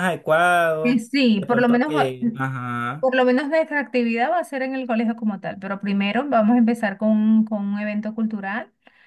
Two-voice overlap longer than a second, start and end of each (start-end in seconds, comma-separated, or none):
0.8-2.1